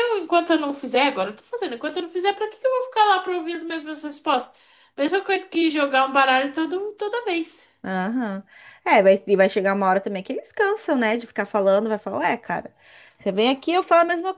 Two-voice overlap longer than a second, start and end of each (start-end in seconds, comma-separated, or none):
none